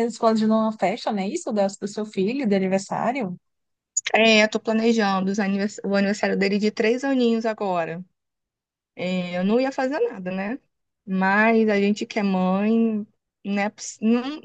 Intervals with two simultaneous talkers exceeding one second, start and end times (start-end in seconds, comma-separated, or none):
none